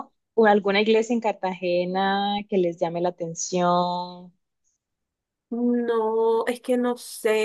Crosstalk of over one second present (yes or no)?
no